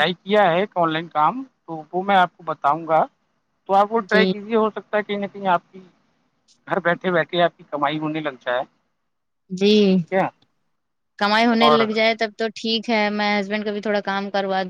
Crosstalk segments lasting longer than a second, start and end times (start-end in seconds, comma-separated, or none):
none